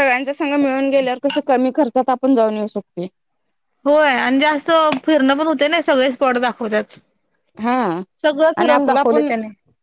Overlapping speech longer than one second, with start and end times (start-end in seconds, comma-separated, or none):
none